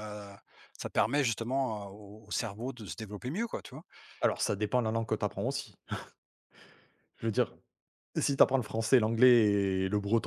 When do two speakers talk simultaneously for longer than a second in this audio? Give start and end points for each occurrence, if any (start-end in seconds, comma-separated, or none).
none